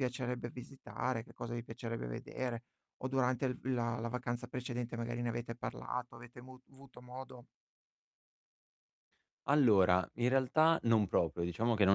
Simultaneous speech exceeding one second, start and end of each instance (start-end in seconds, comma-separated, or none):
none